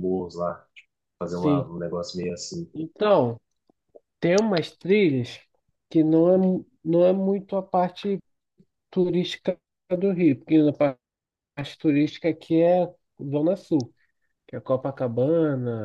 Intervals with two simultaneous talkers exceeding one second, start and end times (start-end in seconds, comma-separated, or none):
none